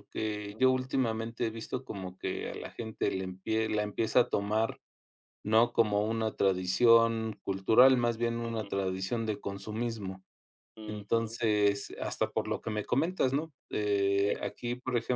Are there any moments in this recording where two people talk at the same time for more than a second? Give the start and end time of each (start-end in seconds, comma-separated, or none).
none